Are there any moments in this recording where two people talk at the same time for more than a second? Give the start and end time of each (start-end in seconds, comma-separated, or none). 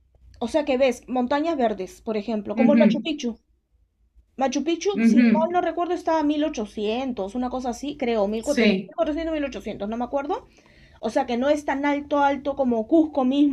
none